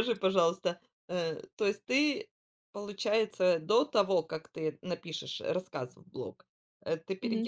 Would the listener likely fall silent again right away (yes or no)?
yes